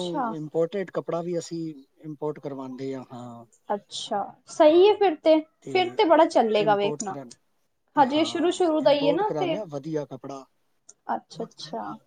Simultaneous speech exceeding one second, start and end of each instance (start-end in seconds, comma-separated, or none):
8.1-9.5